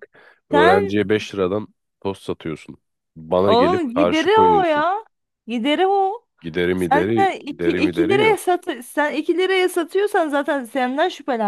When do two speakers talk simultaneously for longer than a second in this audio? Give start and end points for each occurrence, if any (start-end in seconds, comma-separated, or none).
3.4-4.8, 6.8-8.5